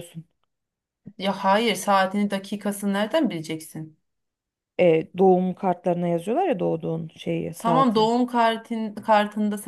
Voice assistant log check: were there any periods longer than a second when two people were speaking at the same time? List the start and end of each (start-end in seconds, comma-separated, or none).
none